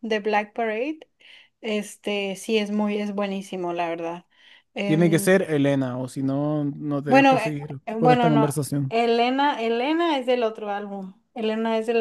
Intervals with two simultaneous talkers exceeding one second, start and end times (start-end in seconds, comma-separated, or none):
7.1-8.9